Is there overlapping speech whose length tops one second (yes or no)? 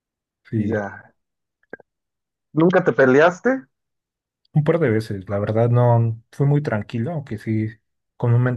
no